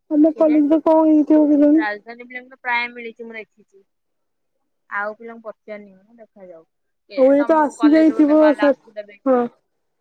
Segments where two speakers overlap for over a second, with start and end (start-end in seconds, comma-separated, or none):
7.2-9.4